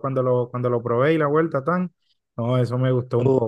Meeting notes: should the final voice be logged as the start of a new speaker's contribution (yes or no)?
yes